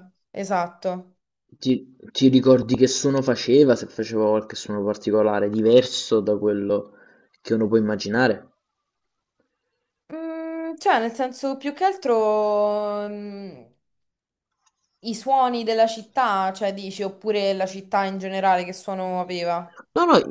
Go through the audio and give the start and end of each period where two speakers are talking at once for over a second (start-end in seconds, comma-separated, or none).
none